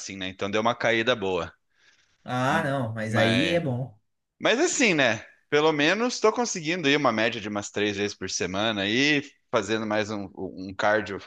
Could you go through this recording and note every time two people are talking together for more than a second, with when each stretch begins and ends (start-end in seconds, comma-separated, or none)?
none